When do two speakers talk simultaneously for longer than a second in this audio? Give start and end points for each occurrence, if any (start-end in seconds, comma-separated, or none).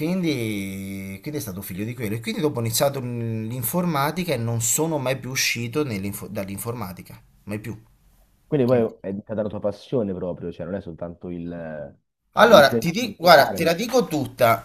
12.3-13.7